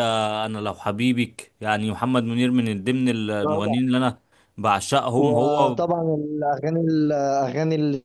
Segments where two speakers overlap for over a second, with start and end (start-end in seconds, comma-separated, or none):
none